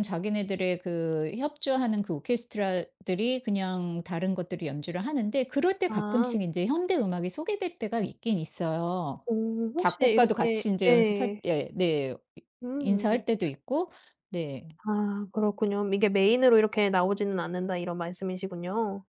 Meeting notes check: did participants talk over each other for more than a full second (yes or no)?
yes